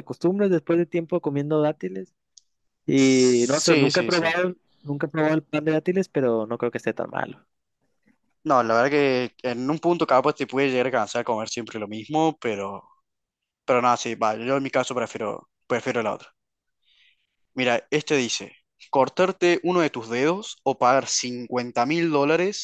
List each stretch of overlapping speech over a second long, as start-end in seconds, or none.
3.0-4.4